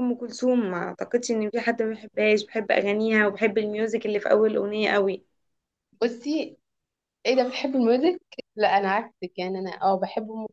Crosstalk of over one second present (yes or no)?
no